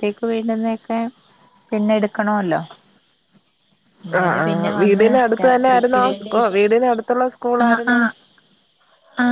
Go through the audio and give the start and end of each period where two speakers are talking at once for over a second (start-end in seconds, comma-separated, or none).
4.2-6.3